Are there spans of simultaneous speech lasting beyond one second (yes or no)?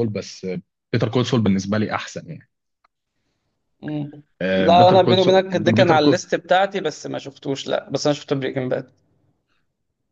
yes